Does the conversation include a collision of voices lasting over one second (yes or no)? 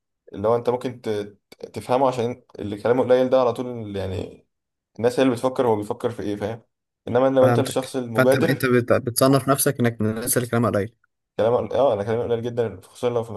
yes